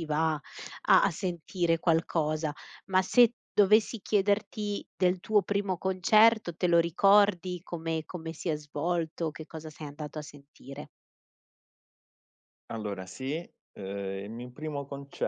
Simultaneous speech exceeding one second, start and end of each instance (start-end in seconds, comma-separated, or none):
none